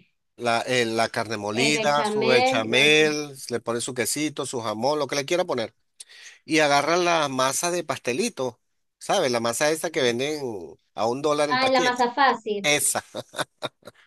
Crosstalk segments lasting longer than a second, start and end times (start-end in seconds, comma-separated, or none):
1.7-3.0